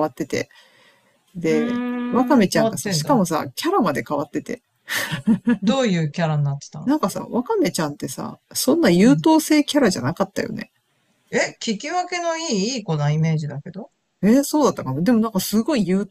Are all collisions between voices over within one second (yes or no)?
no